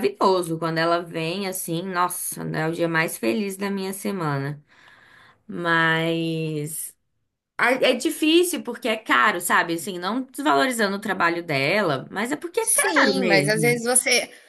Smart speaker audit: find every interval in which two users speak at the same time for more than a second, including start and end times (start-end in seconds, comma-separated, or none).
12.6-13.8